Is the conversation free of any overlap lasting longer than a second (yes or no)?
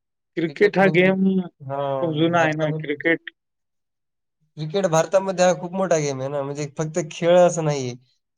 no